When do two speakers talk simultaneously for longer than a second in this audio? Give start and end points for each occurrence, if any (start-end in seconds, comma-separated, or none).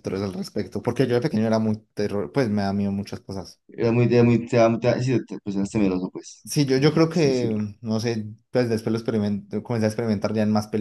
none